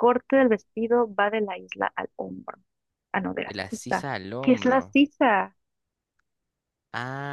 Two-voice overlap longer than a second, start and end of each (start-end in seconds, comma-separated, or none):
3.4-5.0